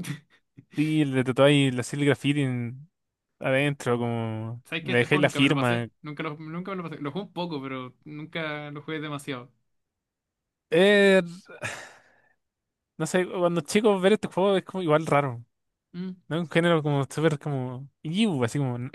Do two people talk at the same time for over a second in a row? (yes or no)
yes